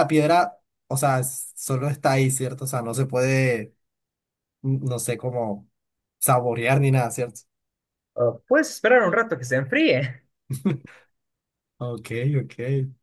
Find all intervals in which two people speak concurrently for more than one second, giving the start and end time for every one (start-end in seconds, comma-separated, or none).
none